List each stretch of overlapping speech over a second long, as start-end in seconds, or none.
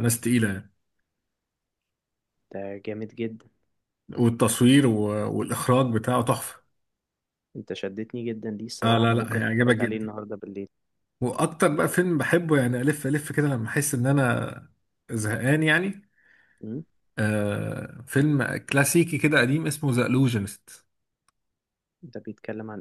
8.8-10.1